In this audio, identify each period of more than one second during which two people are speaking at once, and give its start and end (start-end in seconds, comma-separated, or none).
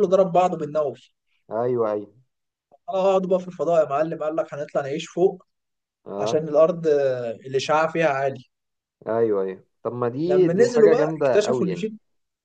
10.2-11.9